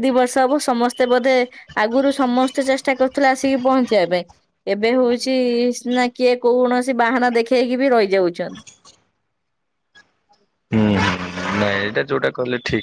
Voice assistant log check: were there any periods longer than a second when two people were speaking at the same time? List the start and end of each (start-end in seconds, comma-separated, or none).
none